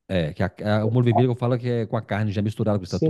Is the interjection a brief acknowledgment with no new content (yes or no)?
no